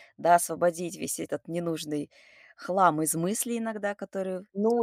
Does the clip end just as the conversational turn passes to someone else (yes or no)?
yes